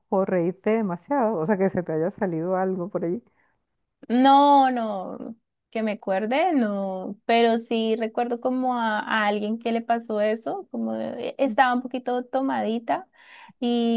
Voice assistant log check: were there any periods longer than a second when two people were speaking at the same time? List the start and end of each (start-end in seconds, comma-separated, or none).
none